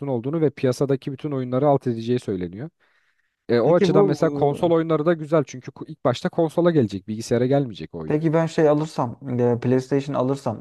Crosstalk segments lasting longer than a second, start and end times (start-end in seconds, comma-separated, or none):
none